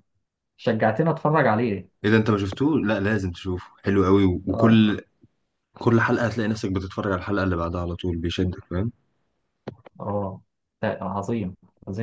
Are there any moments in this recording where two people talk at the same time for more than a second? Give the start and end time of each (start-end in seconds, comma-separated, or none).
none